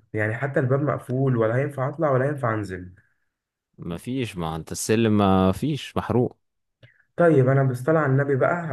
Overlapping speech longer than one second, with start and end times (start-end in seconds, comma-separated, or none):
none